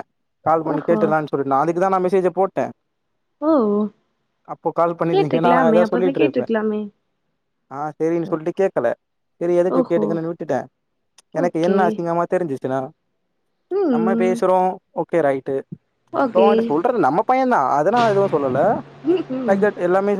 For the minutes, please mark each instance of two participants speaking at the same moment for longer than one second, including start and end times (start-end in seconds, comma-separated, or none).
5.1-6.5